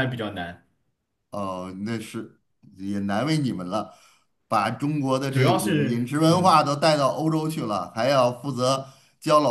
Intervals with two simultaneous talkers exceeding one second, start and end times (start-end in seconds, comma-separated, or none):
5.3-6.6